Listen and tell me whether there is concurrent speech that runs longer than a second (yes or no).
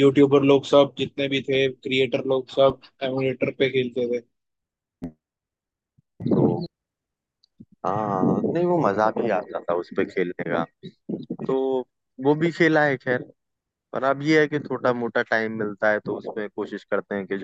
no